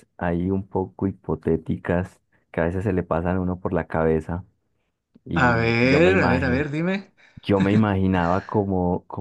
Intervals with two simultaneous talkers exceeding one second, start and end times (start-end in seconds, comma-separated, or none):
5.5-6.7